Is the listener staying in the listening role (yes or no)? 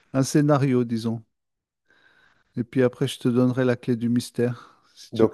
no